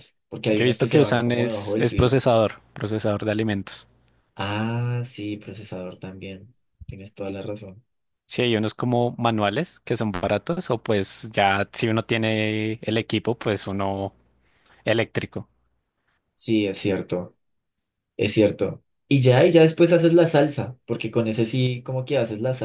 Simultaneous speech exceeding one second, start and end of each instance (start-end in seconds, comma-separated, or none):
0.5-2.2